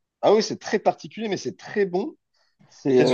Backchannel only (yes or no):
no